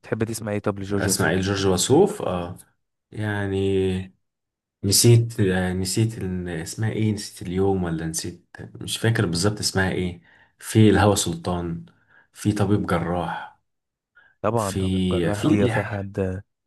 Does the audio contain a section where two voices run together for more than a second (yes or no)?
yes